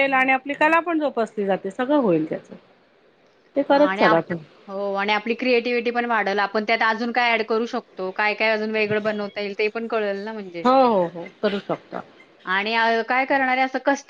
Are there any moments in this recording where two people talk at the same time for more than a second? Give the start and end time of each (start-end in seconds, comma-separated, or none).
none